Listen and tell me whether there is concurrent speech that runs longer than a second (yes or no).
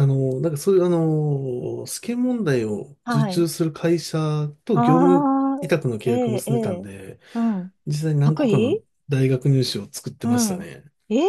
yes